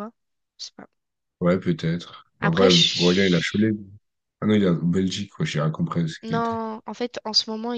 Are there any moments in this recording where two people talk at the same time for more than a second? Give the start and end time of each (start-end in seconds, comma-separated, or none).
2.4-3.7